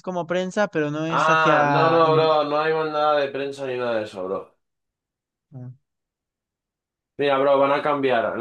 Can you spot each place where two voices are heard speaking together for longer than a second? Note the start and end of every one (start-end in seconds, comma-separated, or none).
1.1-2.4